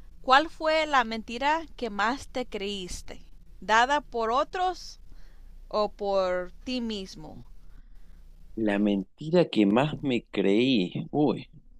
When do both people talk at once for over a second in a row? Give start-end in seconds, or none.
none